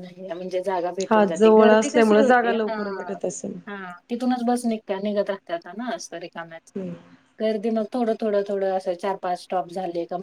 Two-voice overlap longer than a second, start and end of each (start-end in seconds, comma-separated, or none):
1.1-2.8